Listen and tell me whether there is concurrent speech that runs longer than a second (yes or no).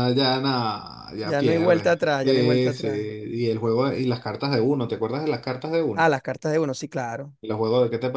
yes